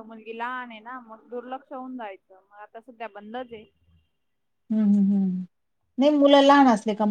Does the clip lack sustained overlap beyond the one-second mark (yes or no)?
yes